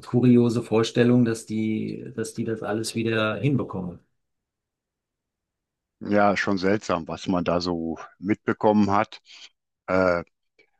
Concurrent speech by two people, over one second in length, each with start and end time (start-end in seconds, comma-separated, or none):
none